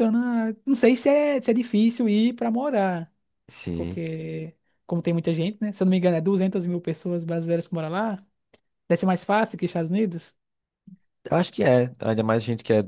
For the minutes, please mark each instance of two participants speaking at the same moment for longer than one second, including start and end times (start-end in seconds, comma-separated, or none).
none